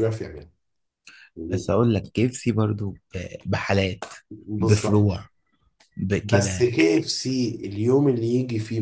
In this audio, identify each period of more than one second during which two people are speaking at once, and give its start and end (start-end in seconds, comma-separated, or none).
none